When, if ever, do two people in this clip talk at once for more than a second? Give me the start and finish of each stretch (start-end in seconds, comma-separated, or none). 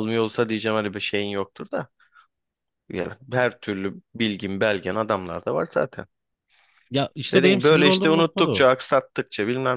7.3-8.7